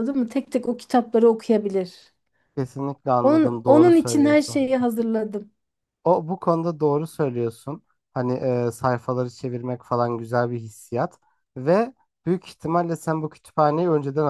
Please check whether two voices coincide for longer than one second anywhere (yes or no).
yes